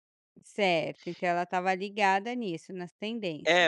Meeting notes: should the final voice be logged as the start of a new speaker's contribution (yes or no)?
yes